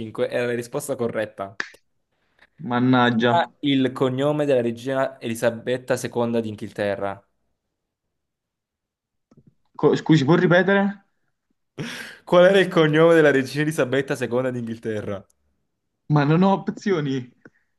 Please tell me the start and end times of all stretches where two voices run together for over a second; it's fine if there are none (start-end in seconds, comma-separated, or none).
none